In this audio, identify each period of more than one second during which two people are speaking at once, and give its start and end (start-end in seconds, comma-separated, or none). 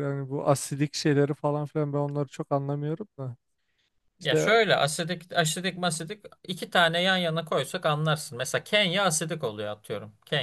none